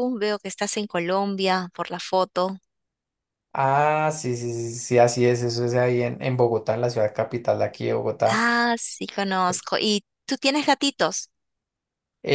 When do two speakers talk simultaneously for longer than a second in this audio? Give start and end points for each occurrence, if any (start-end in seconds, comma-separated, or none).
none